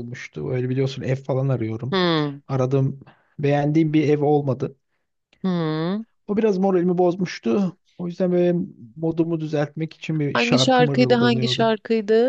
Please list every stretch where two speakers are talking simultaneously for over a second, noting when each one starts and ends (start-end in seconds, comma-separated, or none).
10.3-11.7